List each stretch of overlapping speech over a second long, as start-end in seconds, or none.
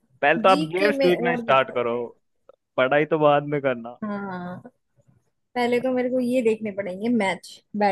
0.5-1.9